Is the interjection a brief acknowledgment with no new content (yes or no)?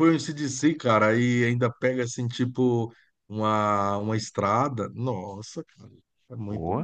no